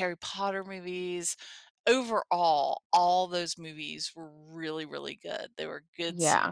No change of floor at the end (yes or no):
yes